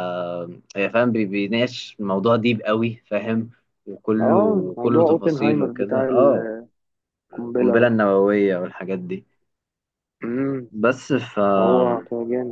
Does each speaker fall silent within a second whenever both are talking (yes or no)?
no